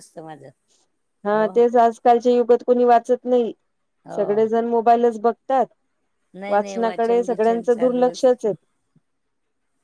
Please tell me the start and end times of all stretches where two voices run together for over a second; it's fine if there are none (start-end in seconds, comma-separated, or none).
6.5-8.3